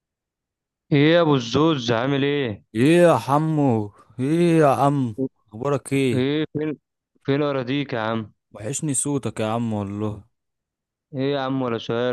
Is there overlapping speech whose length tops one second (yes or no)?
no